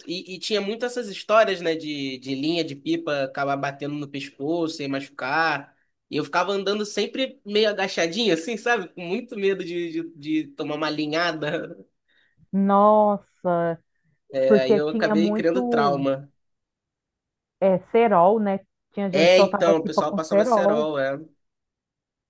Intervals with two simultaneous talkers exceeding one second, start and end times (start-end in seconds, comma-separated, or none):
14.5-16.1, 19.1-20.9